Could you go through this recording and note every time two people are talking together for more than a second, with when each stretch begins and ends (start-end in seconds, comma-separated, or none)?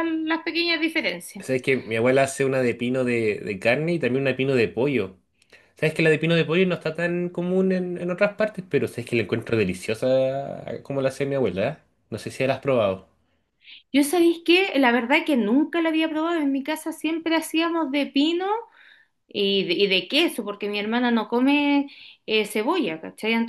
none